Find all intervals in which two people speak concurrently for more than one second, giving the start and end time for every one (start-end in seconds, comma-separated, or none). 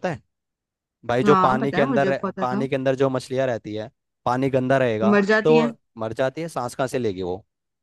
1.2-2.6